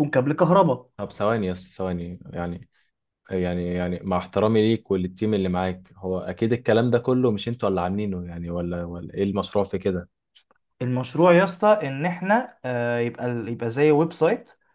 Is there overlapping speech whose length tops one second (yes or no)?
no